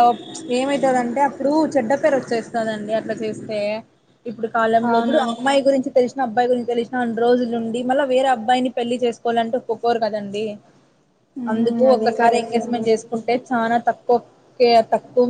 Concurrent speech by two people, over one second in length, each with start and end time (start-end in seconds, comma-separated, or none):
11.5-12.9